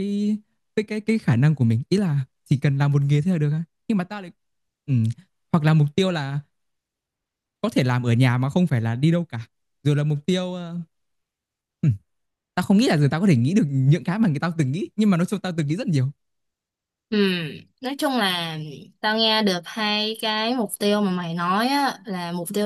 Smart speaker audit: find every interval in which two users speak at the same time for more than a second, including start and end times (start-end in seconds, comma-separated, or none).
none